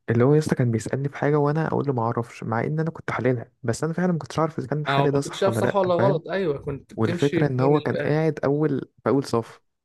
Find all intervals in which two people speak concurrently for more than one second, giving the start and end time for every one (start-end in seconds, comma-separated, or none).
4.9-6.2, 7.0-8.2